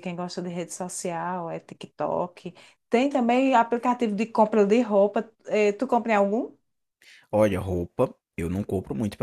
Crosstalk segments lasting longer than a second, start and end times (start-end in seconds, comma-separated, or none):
none